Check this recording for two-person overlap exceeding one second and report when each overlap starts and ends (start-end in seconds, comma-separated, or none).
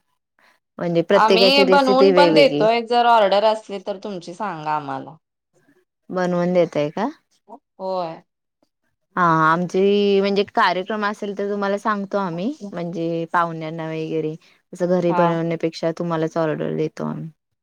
1.2-2.6